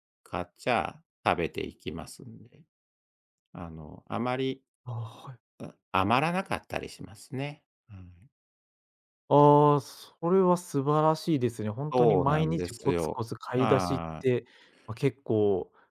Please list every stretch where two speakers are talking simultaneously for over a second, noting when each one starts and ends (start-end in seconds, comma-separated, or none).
11.9-14.3